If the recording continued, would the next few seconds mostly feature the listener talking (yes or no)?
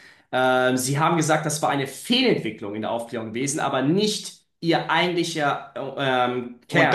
yes